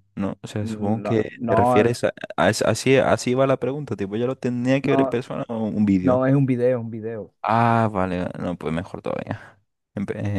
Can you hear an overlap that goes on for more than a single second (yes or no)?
yes